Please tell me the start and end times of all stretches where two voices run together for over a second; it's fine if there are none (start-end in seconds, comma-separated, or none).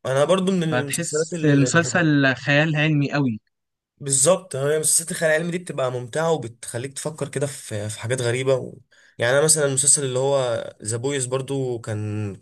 0.7-2.1